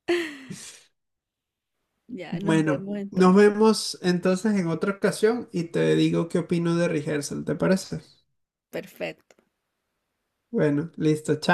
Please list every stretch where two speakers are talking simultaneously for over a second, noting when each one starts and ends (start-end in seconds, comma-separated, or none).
2.3-3.5